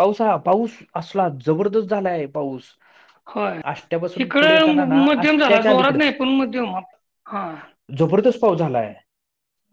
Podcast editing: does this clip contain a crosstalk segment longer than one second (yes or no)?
yes